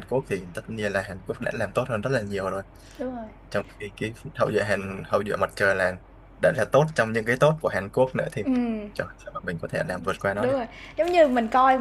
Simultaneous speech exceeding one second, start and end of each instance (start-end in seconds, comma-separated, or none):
none